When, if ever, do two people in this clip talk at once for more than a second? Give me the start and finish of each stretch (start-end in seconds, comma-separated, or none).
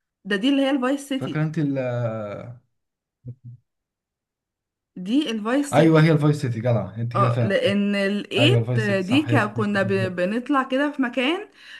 8.4-10.2